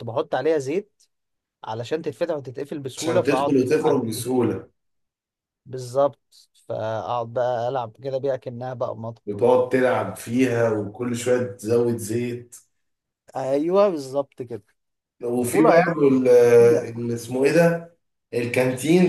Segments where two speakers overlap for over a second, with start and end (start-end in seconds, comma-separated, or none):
3.0-4.3